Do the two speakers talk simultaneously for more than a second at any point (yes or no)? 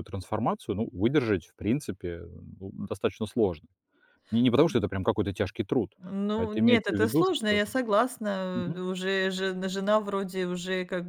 yes